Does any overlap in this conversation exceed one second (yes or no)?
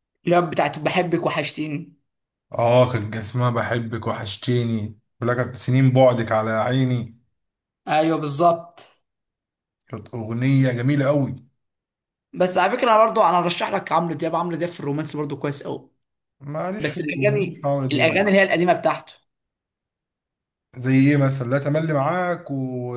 yes